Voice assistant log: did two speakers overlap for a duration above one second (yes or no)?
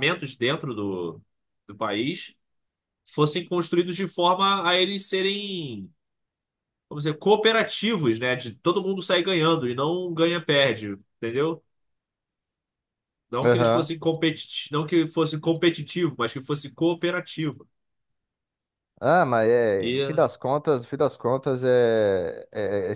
no